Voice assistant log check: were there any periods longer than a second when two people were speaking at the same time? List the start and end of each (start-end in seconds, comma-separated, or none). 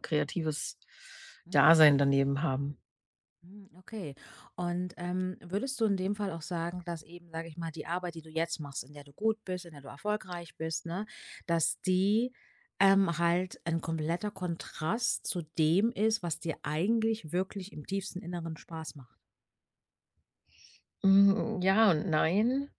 none